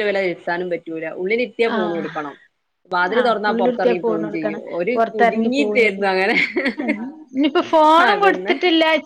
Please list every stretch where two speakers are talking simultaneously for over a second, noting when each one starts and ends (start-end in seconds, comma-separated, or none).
3.2-5.5